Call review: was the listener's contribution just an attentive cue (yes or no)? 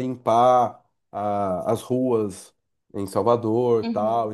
yes